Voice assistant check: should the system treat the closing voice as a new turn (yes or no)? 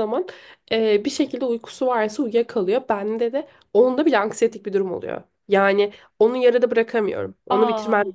no